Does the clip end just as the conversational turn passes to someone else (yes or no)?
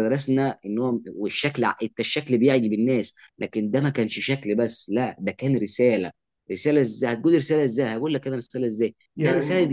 no